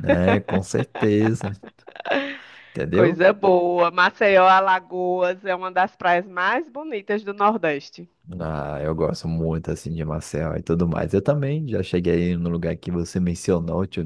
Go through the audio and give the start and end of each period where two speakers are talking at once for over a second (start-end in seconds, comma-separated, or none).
none